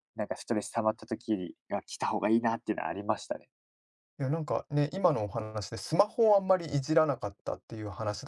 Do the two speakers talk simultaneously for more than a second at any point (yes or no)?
no